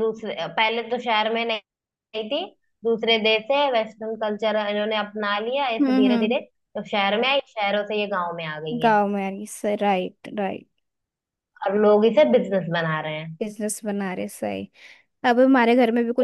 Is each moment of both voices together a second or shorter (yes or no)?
yes